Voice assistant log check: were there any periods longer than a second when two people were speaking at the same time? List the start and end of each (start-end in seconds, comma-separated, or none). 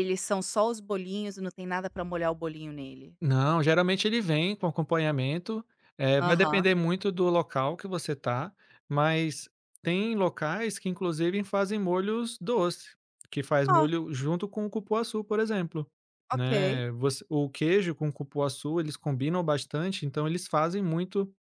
none